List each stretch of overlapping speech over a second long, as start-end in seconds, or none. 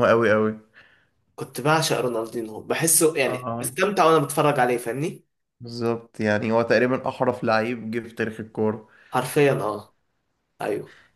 none